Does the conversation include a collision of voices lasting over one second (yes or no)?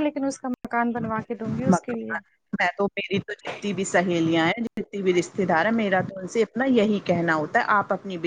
no